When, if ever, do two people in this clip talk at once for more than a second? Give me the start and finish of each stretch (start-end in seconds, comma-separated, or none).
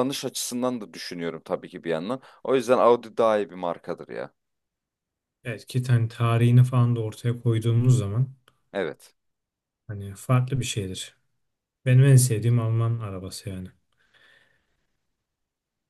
none